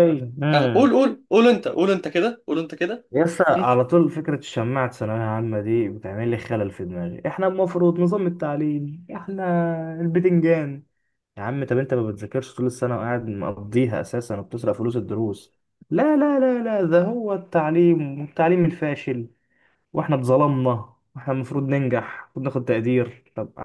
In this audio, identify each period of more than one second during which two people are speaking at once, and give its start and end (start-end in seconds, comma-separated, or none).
none